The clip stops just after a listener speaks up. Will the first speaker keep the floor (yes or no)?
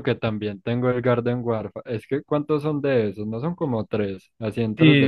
no